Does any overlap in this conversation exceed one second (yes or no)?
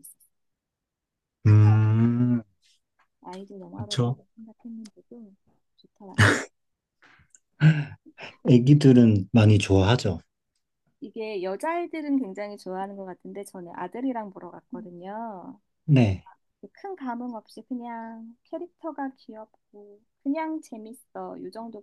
no